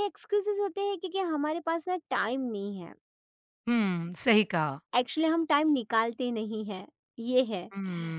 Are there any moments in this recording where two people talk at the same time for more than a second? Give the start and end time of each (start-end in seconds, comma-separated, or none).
none